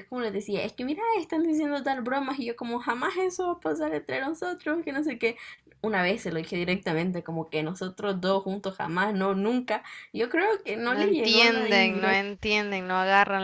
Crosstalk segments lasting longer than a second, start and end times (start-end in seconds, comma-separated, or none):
10.8-12.2